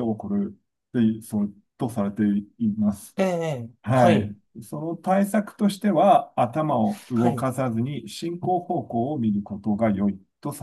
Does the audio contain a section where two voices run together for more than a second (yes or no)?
no